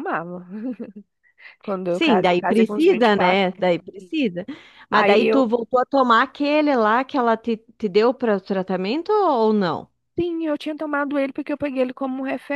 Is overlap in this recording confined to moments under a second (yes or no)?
no